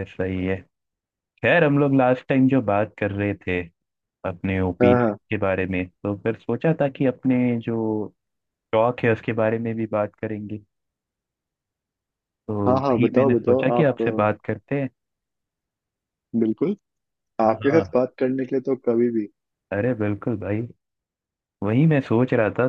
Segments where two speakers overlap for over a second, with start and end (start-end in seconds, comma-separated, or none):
12.6-14.5